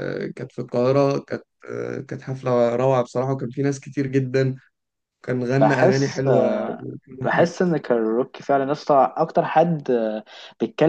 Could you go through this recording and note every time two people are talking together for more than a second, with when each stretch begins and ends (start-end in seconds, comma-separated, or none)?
5.6-7.5